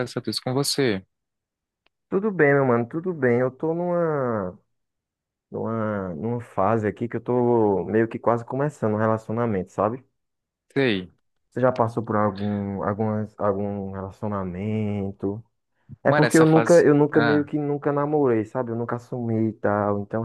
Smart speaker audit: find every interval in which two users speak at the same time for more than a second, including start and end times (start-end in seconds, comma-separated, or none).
16.0-17.5